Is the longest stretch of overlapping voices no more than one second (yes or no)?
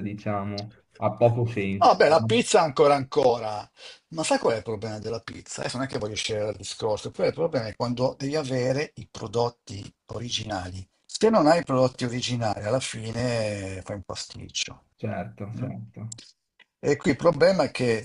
yes